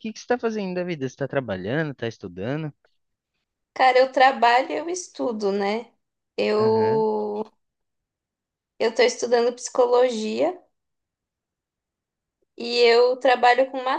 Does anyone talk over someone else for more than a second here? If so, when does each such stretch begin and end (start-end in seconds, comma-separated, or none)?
none